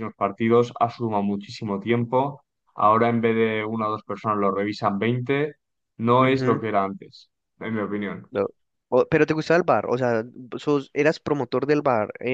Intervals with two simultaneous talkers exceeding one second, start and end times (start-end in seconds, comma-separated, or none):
none